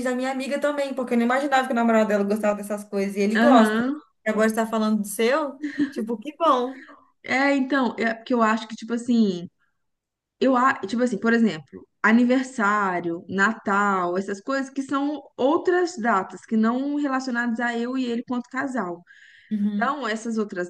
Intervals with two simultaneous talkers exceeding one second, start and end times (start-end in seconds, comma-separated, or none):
none